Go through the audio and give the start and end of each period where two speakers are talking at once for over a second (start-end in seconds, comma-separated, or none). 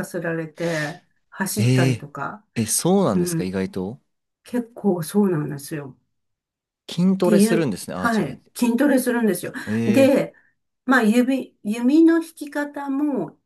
7.0-8.5